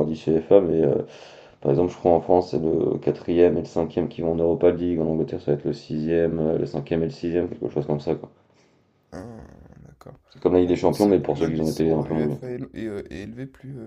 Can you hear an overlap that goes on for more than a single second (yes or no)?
yes